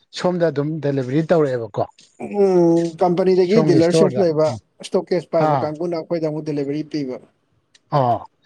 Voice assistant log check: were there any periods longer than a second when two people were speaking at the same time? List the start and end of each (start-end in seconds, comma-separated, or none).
none